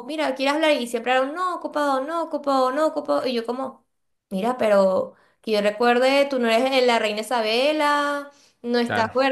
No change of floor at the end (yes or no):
yes